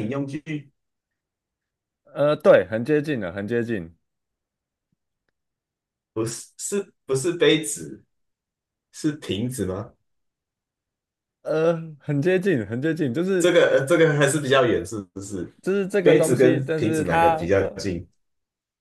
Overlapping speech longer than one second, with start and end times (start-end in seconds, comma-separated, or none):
16.0-17.7